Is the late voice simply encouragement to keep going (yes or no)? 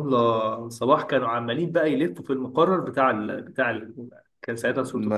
yes